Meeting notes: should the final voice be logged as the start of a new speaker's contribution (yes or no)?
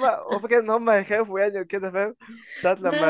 no